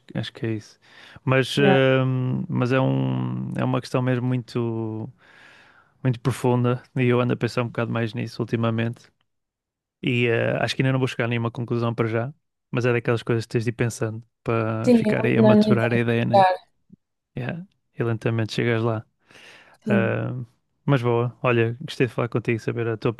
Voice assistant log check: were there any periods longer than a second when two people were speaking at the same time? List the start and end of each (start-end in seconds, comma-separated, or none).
14.8-16.4